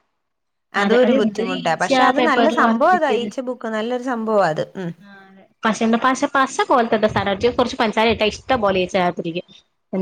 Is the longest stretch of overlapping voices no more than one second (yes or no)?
no